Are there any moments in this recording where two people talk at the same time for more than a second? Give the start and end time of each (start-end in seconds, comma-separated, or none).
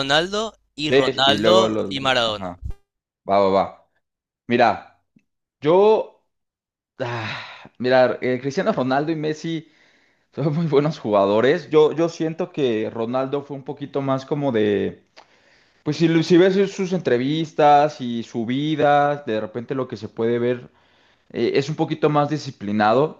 0.9-2.5